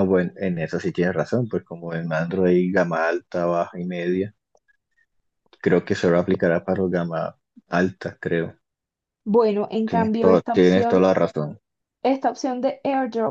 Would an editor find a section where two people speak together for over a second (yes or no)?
yes